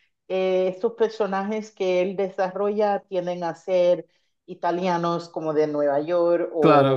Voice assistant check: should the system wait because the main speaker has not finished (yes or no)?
yes